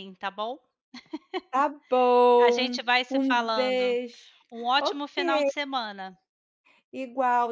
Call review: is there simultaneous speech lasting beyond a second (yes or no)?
yes